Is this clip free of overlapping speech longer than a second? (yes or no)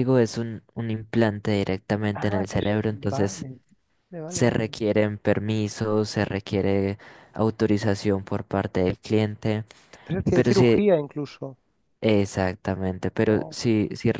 no